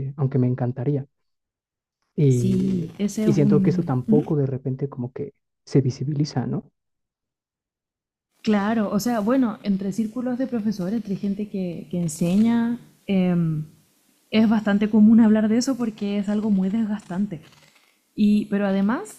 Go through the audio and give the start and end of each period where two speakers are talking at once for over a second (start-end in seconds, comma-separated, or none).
2.3-4.2